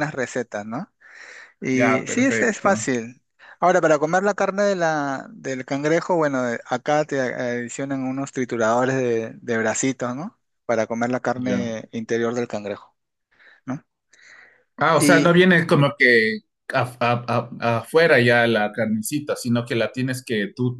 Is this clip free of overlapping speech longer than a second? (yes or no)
no